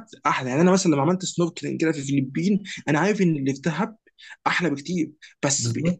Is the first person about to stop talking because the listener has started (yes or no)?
no